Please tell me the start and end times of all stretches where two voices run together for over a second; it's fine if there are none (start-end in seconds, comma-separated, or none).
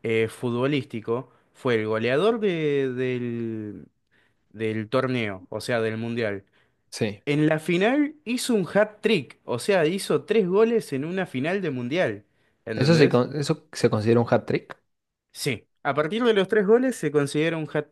none